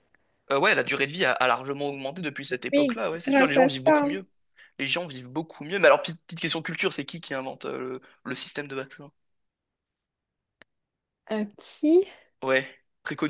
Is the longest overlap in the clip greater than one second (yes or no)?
yes